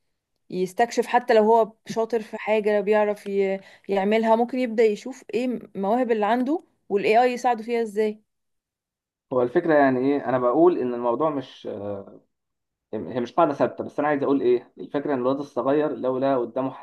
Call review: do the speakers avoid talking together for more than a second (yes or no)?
yes